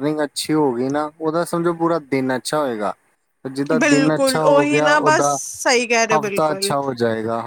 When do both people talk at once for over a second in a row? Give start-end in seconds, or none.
3.8-5.4